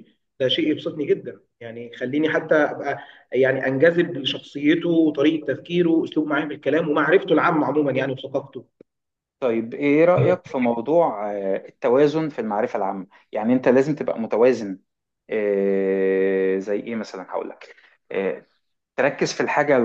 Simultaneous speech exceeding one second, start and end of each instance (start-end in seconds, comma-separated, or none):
none